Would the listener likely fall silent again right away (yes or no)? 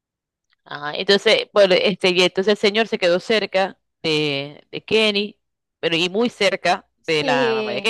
no